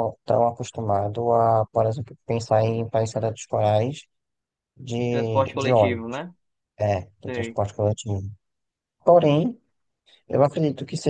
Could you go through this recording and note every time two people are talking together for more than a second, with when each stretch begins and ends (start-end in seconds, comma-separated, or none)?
5.0-6.2